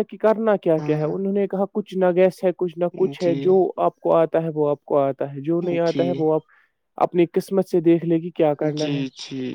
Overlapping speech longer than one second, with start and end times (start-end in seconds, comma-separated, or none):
none